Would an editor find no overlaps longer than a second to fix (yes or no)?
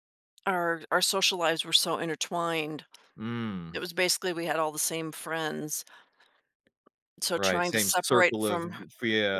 no